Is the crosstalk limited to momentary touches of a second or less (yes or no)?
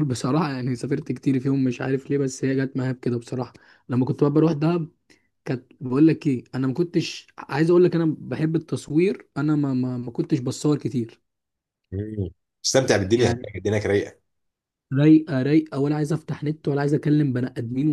yes